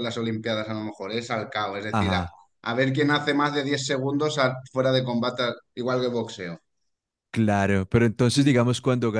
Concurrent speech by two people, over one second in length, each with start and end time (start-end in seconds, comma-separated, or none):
none